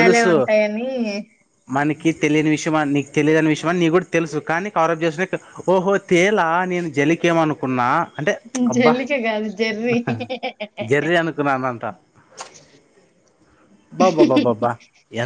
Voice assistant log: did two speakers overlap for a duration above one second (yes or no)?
no